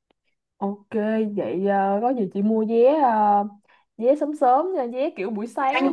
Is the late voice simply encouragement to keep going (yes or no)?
yes